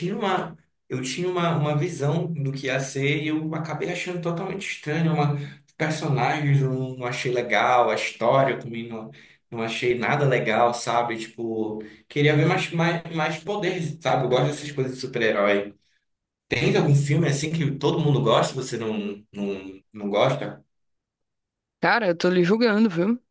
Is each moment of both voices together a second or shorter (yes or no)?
yes